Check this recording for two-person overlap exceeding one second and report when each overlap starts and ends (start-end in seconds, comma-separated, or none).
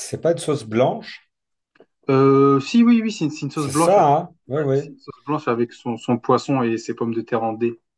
3.5-4.9